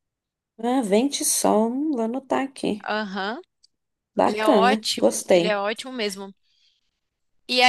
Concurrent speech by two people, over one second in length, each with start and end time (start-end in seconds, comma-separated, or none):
4.2-5.7